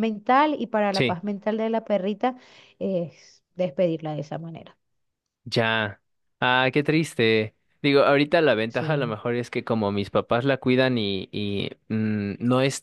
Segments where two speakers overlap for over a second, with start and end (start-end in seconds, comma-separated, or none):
none